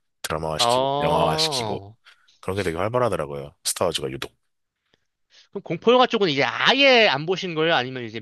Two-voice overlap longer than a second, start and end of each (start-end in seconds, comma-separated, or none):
0.6-1.8